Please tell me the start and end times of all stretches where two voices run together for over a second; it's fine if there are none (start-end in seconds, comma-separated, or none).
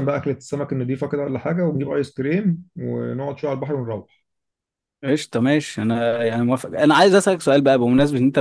none